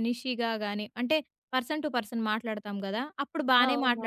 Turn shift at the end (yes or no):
no